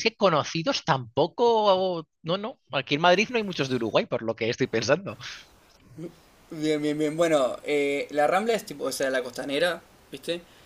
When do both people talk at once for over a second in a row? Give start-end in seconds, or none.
none